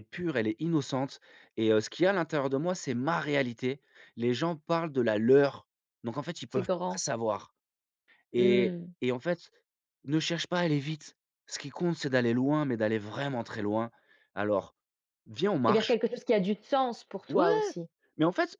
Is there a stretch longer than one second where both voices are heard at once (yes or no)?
no